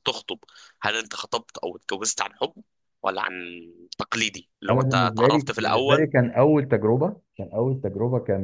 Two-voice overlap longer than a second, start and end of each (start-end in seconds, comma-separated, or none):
4.7-6.1